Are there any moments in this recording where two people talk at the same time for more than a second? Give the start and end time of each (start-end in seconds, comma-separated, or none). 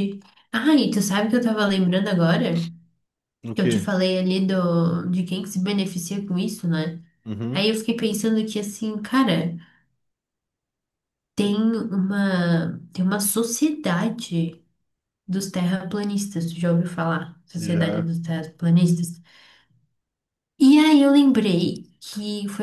none